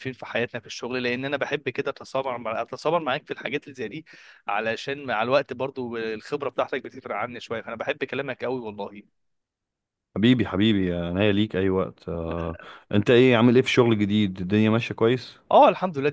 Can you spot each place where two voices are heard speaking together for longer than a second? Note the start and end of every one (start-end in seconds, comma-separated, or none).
none